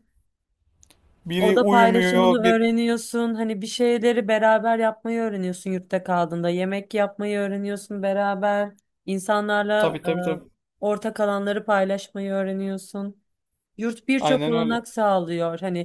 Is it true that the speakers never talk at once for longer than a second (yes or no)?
no